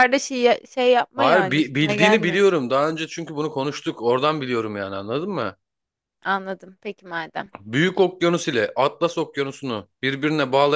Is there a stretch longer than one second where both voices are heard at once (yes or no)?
yes